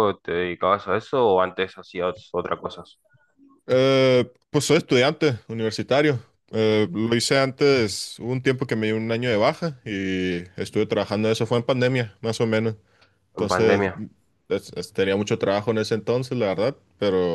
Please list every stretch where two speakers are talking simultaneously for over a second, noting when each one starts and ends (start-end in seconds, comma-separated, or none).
none